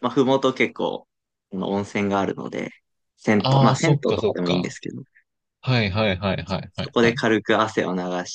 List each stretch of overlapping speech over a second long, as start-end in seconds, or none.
3.4-4.8